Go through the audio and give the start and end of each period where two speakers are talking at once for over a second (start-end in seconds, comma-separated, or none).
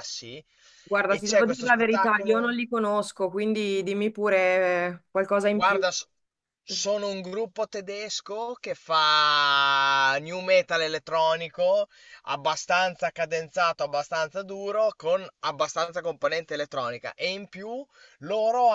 1.1-2.5